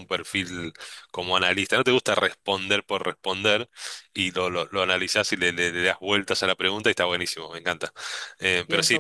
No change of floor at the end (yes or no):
yes